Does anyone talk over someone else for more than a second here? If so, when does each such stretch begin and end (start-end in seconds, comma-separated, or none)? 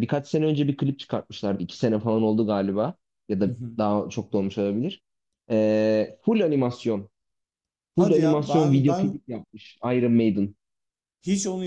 8.0-9.2